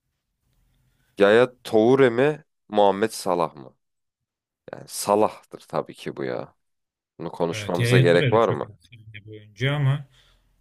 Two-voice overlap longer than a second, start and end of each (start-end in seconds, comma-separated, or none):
7.5-8.7